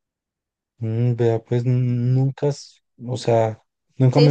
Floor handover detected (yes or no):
yes